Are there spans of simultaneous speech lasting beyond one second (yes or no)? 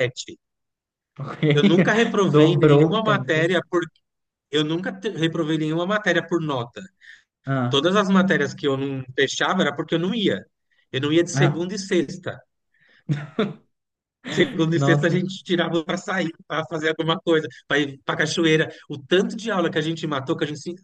yes